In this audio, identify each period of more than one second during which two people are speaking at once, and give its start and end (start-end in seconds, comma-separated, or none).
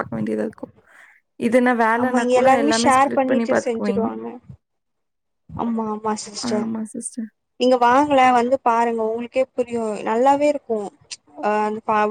2.0-4.1